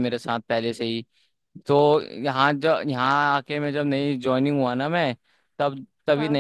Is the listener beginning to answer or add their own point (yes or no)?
no